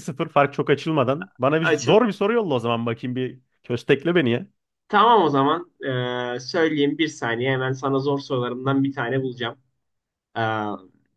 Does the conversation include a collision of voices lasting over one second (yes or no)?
no